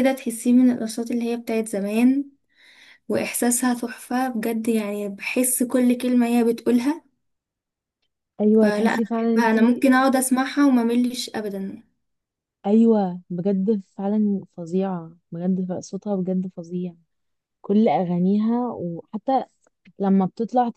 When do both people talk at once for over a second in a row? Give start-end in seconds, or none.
8.6-9.8